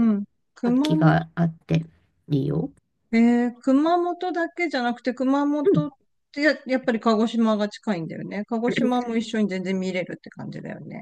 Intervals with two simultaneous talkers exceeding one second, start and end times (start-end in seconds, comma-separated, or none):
none